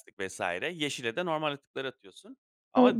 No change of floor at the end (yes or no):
no